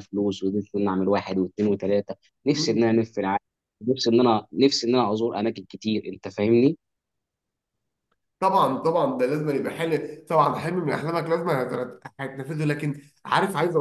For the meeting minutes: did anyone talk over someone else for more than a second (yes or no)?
no